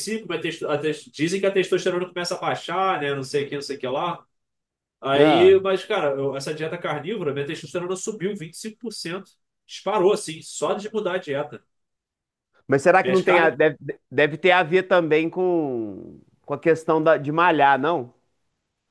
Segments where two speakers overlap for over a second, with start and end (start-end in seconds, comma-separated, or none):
none